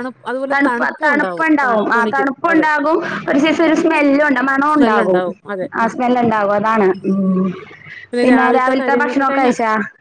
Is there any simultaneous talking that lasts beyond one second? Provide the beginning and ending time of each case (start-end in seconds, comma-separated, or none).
0.5-2.7